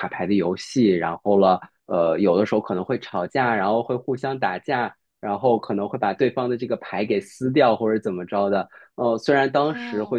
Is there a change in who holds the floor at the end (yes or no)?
no